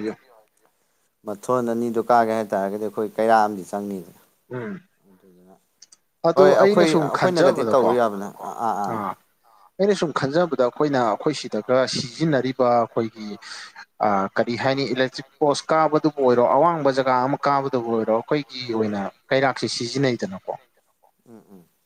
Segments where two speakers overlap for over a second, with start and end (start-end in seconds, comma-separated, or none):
6.4-8.0